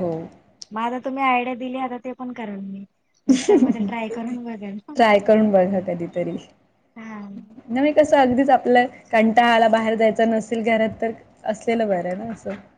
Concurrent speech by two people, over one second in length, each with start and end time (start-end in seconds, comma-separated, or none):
none